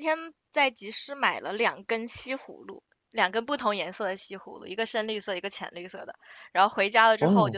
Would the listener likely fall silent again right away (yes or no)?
yes